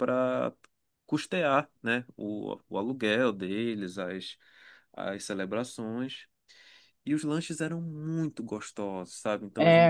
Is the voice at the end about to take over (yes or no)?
no